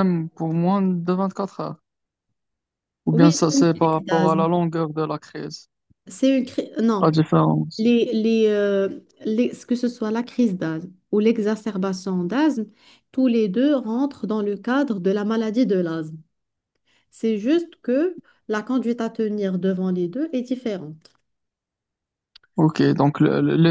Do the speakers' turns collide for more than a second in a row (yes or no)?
yes